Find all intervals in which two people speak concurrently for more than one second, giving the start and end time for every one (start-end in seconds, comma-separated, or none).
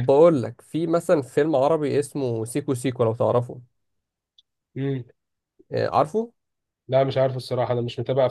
none